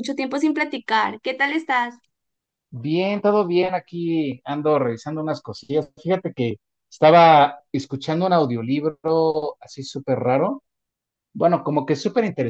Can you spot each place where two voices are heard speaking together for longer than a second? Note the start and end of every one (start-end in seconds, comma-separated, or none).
none